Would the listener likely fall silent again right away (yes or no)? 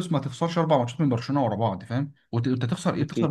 yes